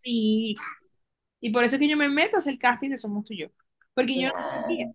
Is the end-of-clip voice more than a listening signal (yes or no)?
no